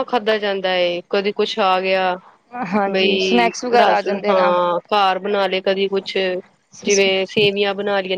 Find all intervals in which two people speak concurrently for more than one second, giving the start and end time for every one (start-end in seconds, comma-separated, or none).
2.9-4.6